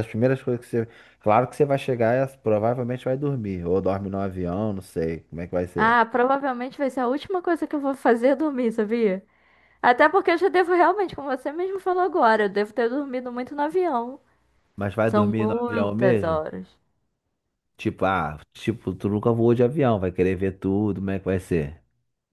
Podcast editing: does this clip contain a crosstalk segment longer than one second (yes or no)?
yes